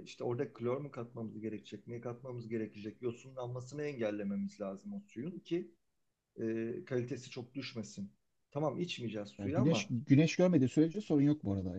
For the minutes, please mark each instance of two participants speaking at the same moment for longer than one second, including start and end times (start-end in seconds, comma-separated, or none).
none